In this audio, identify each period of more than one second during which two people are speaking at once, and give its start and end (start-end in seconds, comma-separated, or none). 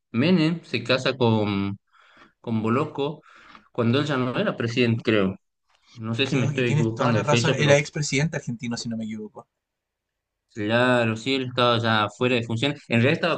6.2-7.8